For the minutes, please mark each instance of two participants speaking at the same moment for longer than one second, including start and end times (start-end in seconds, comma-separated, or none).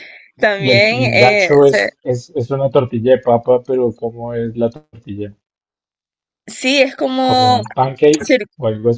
0.6-1.9